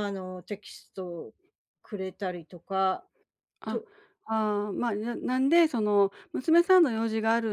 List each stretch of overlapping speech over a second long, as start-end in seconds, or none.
none